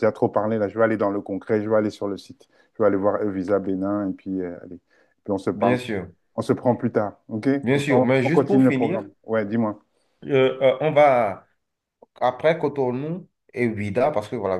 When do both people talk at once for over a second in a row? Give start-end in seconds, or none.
7.6-9.1